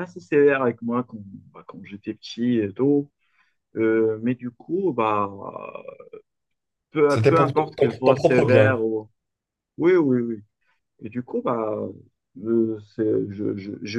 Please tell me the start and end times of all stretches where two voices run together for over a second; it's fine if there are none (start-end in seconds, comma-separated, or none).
7.1-8.9